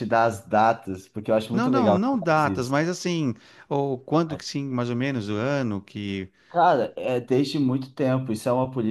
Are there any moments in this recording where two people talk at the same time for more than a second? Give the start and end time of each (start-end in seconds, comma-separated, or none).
1.5-2.7